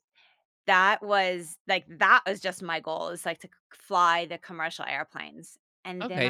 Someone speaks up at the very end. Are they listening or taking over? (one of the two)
taking over